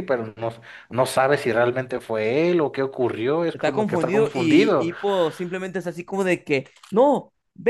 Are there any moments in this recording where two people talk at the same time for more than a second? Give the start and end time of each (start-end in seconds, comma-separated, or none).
3.5-4.9